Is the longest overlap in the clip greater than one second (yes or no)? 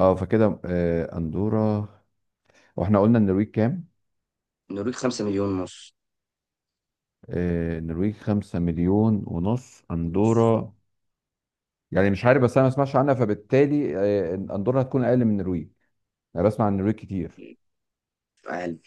no